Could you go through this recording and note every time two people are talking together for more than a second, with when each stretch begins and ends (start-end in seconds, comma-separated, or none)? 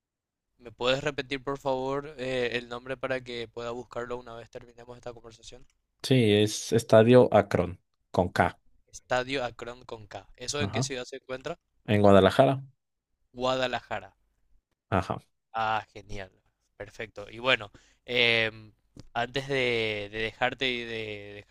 none